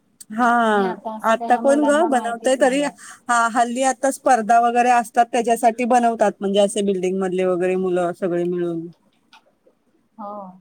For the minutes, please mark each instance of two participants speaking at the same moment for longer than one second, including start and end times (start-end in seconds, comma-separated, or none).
1.3-2.9